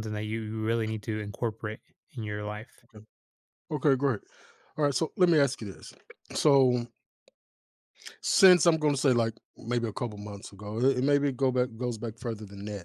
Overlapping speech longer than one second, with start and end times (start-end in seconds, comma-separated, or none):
none